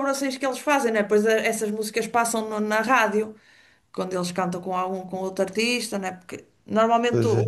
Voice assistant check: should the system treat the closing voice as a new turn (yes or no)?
no